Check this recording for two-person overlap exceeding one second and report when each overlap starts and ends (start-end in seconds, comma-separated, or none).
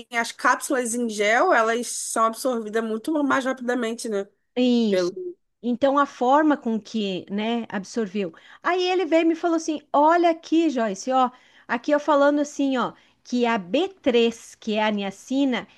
none